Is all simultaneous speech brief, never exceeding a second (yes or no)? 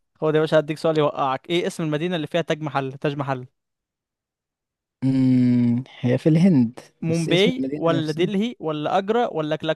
no